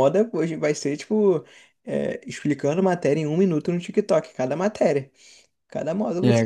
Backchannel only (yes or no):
yes